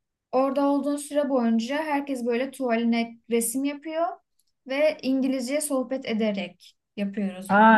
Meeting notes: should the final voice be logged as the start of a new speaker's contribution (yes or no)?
yes